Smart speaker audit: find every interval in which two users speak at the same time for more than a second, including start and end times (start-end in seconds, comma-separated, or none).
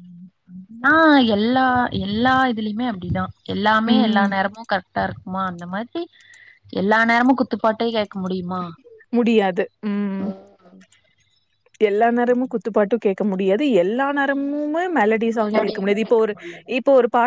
none